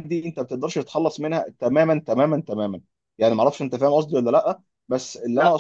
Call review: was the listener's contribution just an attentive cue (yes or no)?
yes